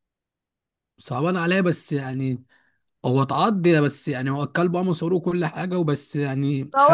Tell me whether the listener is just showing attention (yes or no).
no